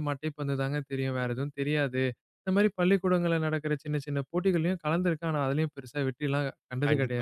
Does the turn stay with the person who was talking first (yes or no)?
no